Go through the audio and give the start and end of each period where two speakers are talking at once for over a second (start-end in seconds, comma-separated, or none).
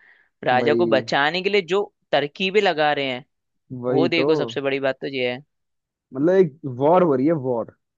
none